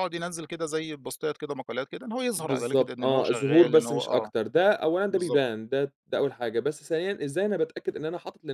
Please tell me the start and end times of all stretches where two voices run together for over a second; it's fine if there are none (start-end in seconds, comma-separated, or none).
2.4-4.3